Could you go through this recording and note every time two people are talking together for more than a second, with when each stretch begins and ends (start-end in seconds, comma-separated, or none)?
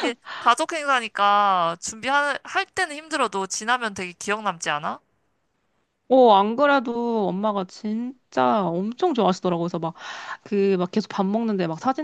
none